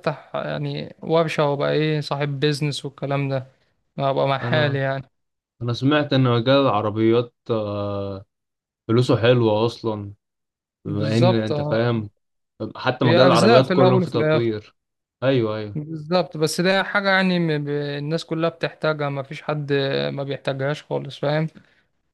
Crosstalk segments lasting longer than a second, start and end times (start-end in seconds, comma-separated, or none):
10.8-12.1, 13.0-14.5